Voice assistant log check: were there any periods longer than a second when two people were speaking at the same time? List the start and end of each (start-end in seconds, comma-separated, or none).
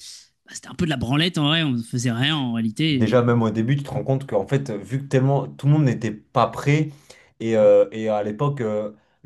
none